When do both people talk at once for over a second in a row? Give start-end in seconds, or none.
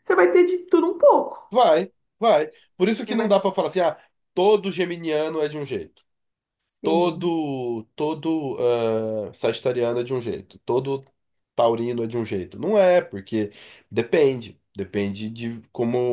none